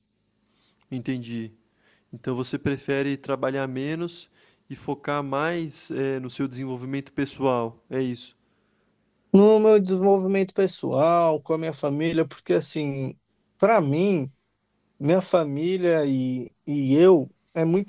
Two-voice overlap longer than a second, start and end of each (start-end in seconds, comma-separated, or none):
none